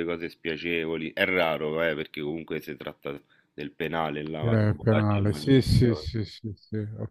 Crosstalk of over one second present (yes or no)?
yes